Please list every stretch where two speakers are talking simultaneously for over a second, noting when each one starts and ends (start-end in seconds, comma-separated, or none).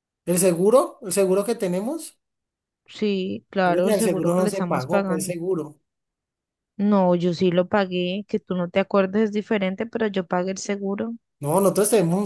3.7-5.3